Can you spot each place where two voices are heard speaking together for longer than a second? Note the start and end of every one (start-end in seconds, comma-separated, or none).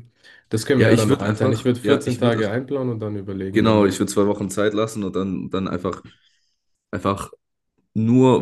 0.8-2.4